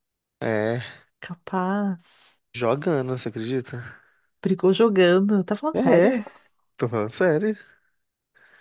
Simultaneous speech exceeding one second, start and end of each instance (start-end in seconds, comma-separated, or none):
none